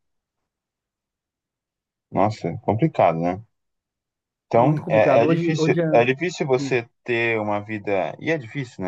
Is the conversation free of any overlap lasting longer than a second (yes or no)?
no